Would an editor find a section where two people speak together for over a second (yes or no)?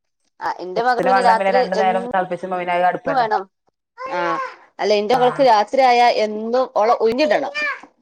yes